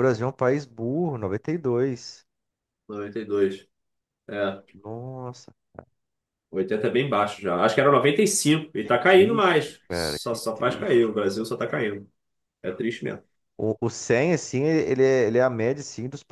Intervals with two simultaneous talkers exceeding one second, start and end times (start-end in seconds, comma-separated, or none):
8.8-11.2